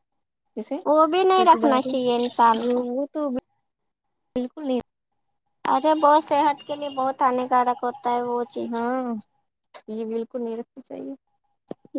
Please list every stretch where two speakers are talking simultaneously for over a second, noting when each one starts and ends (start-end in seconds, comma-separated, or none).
1.4-2.8